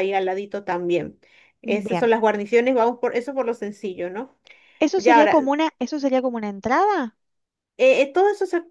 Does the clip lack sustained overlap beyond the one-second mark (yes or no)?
yes